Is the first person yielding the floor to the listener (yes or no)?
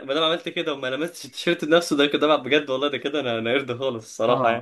yes